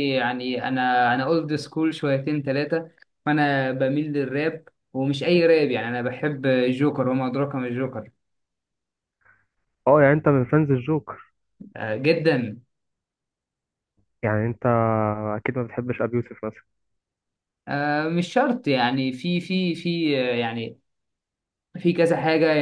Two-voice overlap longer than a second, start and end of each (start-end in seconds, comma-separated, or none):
none